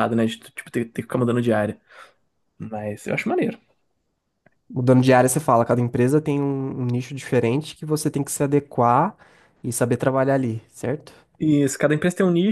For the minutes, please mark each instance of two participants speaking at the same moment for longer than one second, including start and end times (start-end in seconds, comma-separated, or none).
none